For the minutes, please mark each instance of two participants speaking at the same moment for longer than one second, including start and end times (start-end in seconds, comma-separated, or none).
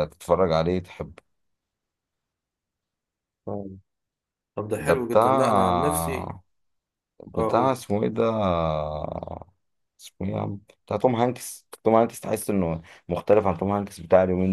4.8-6.3